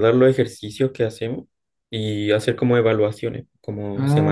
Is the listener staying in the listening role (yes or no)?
no